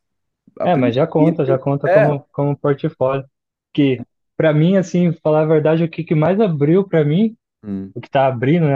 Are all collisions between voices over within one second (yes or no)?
no